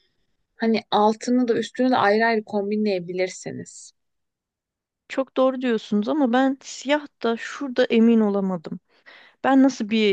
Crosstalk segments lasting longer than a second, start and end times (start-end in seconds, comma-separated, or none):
none